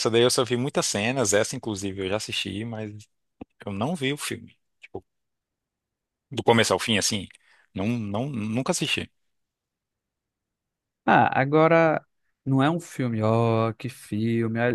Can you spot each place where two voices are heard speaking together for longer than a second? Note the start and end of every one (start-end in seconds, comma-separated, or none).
none